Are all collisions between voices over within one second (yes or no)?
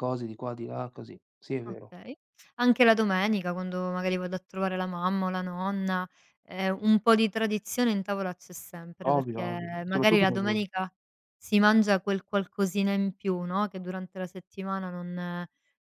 no